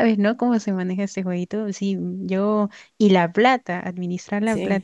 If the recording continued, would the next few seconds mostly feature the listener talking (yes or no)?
no